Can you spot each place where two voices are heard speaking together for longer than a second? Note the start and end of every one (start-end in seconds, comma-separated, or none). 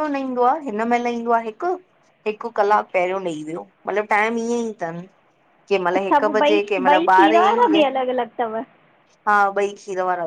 6.0-7.9